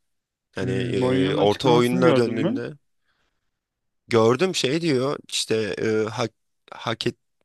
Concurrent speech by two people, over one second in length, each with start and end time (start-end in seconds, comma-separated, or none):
0.6-2.6